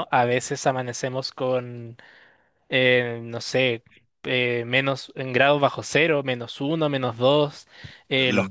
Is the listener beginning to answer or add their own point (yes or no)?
no